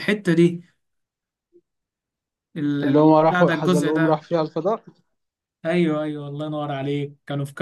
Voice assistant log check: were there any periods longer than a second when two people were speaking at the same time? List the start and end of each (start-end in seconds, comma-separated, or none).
2.8-4.2